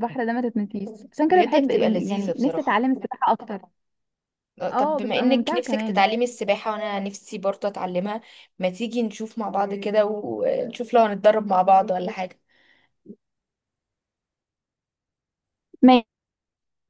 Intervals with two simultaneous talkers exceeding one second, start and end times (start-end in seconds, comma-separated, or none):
1.3-2.8, 4.7-6.0